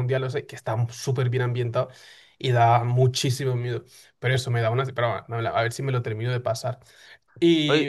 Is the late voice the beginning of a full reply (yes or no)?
no